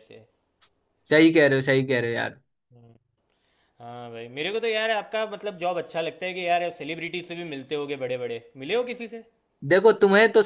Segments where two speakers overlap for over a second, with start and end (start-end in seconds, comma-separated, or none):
none